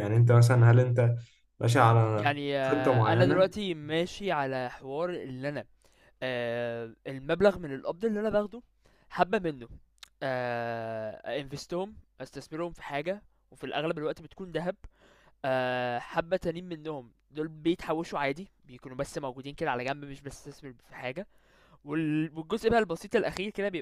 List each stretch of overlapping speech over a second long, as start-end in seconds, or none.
2.1-3.5